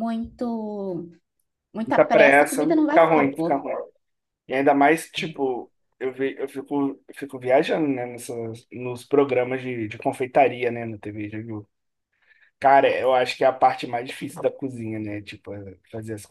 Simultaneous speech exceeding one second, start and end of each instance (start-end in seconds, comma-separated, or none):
1.8-3.6